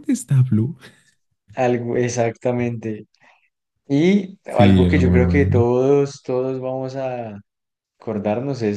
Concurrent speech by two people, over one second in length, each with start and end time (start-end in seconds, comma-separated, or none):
4.5-5.7